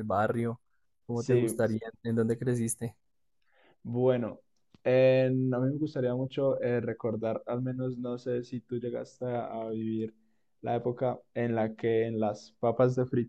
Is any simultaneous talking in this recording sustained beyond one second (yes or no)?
no